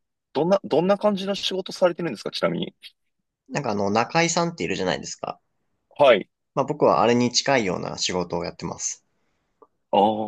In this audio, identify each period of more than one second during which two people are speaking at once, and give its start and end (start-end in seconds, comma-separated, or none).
none